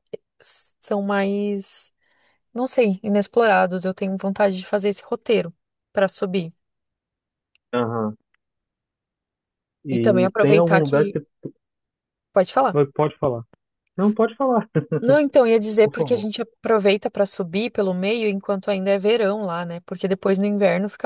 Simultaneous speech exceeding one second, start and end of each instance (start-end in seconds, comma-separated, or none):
9.9-11.2